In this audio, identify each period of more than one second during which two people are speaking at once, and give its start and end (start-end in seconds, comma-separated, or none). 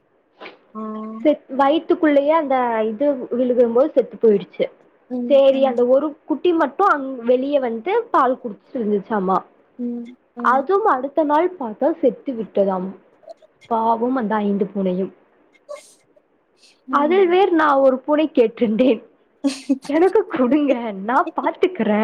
none